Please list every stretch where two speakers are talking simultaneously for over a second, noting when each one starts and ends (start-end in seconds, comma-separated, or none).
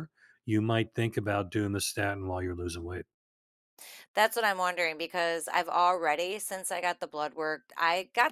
none